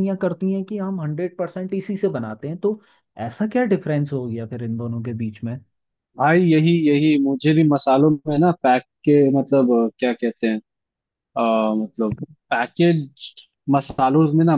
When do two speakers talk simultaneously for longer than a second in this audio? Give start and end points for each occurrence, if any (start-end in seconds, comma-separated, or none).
none